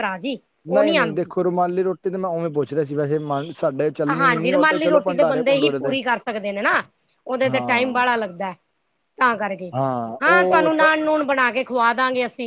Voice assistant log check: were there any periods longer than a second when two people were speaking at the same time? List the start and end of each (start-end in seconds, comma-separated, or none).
4.2-5.9